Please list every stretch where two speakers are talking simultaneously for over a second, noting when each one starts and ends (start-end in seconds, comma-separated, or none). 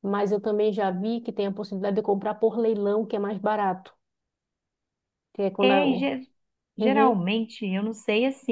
none